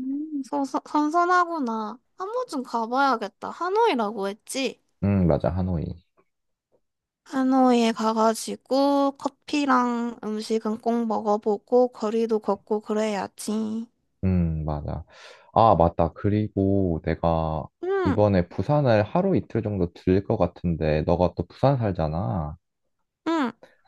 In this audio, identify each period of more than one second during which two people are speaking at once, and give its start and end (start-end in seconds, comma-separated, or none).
none